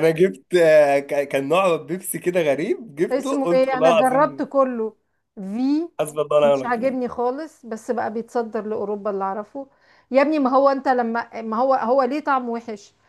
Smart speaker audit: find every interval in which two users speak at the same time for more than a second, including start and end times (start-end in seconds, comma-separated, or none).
3.1-4.4